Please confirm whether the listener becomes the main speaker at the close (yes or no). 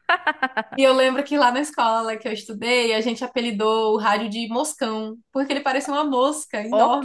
yes